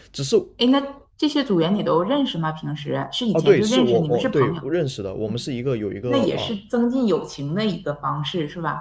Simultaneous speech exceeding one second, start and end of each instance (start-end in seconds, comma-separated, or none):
3.3-4.6